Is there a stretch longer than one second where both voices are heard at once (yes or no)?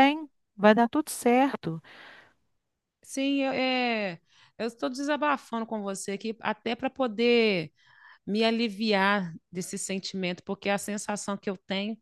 no